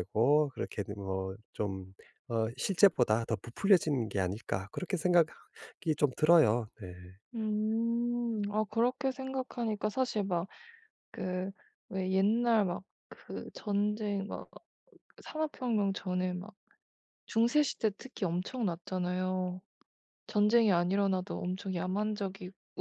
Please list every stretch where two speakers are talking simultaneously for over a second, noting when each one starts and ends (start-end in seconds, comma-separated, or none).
none